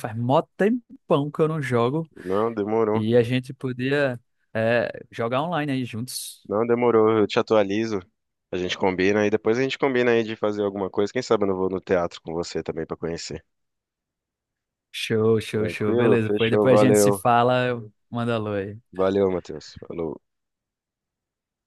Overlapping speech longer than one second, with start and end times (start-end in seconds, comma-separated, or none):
15.5-17.2